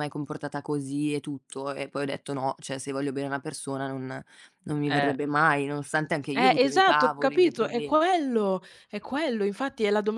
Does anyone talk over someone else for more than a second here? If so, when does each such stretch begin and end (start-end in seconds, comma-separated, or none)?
6.4-8.0